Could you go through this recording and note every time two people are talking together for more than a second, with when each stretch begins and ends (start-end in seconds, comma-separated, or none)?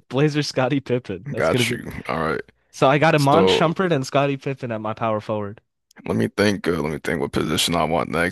none